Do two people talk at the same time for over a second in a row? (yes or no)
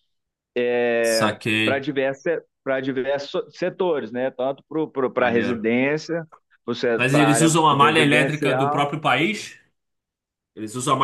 yes